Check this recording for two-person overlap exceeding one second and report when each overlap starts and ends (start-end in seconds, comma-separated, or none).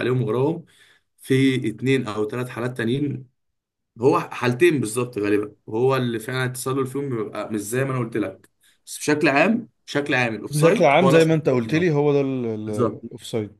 10.5-11.9